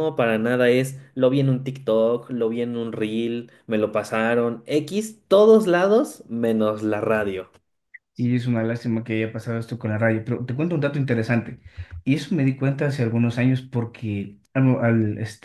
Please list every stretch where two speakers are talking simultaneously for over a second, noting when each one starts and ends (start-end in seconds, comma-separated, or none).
none